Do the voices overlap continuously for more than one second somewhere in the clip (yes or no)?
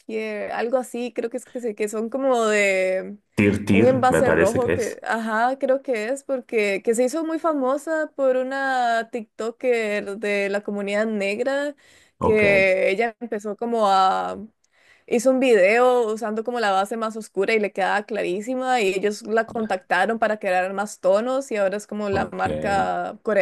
yes